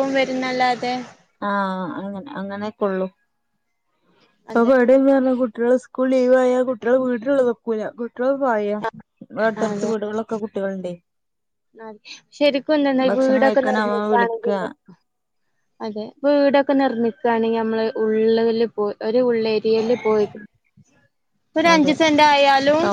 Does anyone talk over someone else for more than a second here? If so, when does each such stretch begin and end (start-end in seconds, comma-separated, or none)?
13.1-14.5